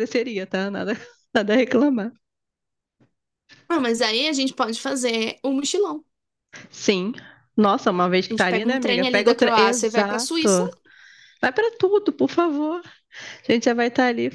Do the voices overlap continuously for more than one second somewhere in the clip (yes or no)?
yes